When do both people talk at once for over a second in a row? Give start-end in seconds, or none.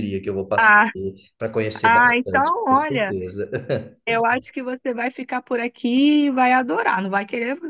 1.8-3.2